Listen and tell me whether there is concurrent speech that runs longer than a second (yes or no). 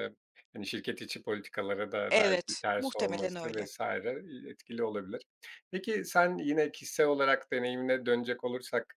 yes